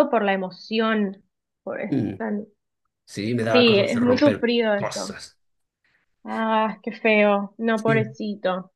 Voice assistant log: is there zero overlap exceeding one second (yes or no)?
no